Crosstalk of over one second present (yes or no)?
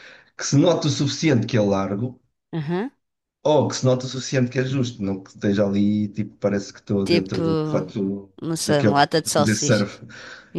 yes